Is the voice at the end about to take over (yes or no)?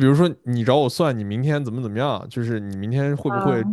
no